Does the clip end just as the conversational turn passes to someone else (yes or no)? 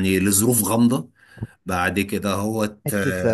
yes